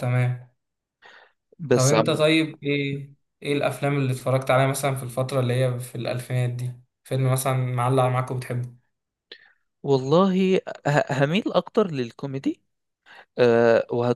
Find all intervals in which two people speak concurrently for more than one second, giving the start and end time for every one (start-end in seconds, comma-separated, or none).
none